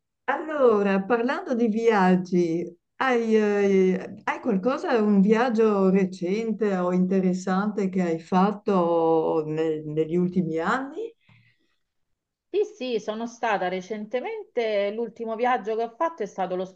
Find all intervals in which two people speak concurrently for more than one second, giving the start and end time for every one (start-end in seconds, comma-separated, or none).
none